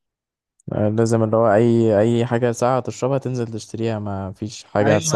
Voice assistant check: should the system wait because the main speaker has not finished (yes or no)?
no